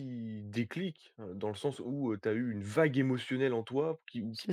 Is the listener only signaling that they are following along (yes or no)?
yes